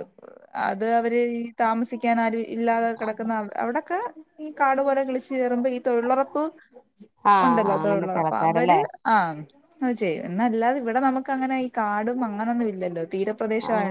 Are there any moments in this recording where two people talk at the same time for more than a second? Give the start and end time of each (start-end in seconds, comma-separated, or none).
7.4-8.8